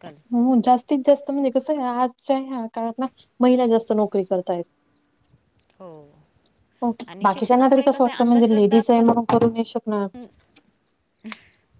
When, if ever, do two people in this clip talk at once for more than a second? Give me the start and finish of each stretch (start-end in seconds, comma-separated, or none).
7.3-9.1